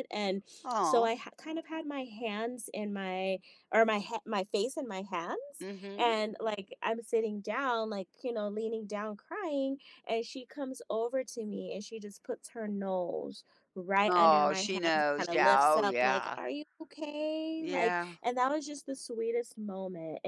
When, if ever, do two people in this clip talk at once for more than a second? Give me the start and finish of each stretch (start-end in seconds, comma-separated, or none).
14.1-16.4